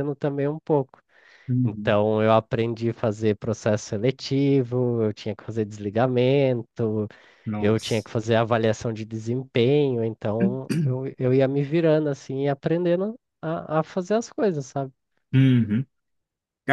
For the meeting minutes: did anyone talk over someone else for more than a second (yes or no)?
no